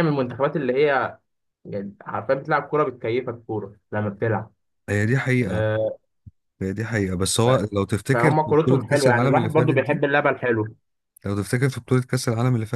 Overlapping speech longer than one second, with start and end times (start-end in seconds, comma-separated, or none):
8.1-10.0